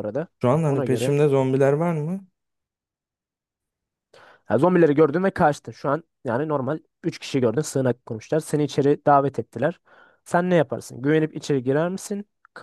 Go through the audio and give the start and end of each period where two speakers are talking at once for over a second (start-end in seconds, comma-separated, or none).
none